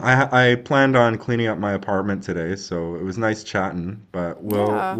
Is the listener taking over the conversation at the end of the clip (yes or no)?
no